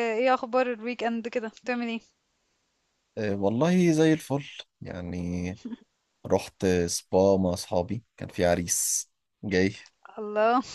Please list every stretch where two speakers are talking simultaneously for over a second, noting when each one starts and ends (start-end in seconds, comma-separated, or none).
none